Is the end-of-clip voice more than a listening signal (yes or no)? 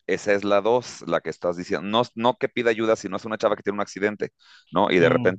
no